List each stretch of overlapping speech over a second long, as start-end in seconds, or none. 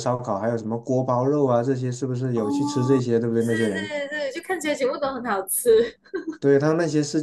2.3-4.0